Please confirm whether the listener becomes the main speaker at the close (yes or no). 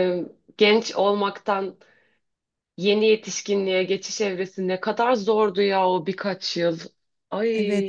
yes